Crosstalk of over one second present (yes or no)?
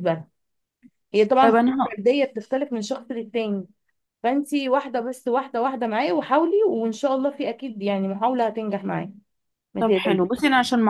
no